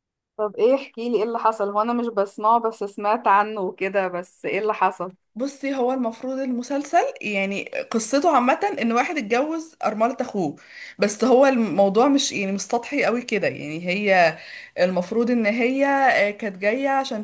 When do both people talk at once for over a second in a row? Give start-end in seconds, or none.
none